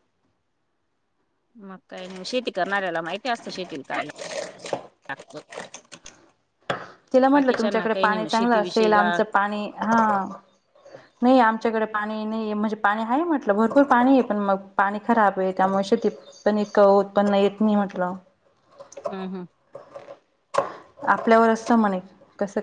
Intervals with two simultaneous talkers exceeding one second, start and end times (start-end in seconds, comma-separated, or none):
7.3-9.1